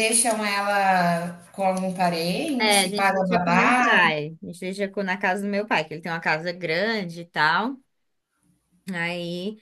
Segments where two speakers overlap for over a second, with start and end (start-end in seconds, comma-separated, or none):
2.6-4.0